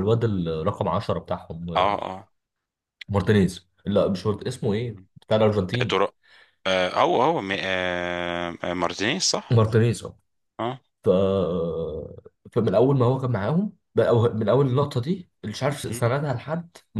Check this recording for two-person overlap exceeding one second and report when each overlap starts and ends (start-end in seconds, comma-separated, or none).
none